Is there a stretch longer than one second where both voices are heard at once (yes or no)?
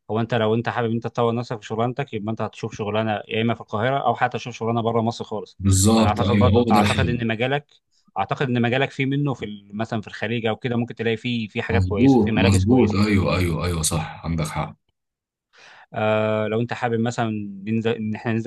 yes